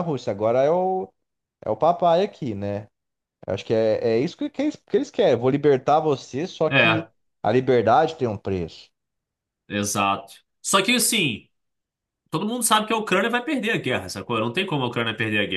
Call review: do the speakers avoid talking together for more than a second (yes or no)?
yes